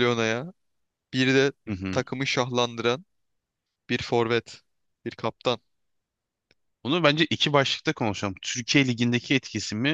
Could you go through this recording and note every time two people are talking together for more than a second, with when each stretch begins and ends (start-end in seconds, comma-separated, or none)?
none